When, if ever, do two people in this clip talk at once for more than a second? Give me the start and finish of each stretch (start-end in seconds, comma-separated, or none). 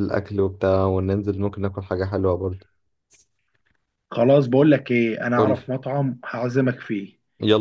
none